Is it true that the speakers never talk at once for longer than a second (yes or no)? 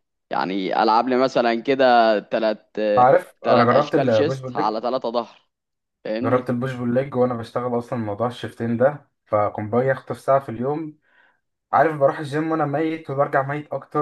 no